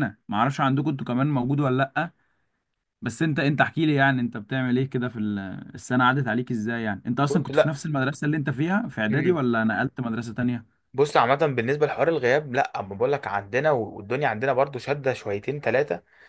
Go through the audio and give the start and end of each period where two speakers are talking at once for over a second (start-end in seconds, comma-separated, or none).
none